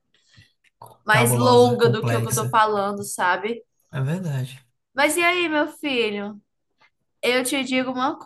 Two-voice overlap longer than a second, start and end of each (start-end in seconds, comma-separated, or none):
1.1-2.6